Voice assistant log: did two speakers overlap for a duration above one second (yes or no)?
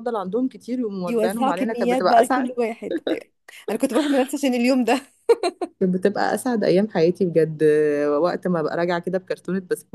yes